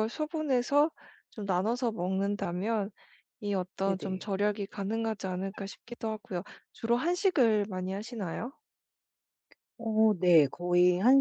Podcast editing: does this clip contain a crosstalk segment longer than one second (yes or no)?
no